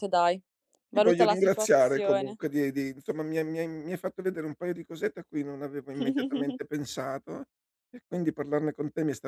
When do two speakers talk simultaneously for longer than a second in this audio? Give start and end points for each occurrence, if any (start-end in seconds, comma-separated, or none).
0.9-2.4